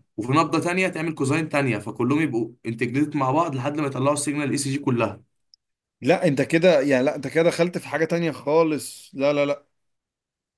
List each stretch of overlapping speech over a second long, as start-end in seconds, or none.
none